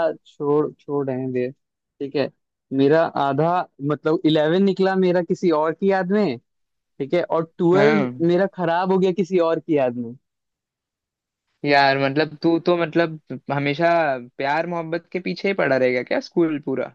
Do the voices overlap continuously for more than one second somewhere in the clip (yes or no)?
no